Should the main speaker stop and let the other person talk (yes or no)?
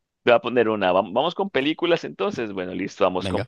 no